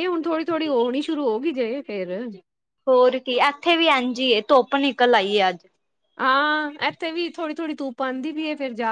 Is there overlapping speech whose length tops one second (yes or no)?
no